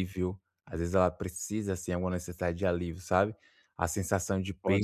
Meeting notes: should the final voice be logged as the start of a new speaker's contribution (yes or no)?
no